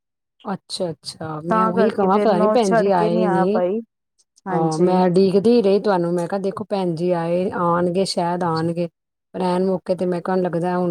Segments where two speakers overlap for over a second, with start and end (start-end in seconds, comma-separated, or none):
1.5-3.6